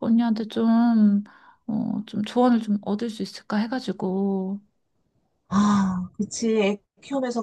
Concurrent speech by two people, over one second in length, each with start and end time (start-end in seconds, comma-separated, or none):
none